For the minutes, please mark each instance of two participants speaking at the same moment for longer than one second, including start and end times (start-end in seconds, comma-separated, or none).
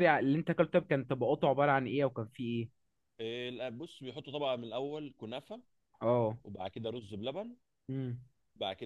none